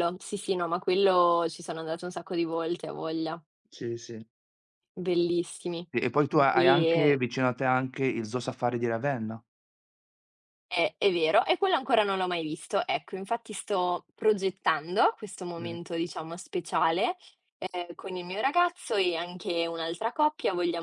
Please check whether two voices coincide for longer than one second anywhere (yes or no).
no